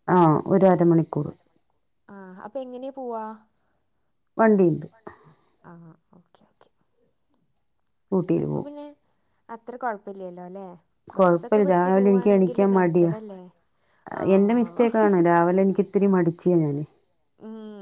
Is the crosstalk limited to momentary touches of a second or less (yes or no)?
no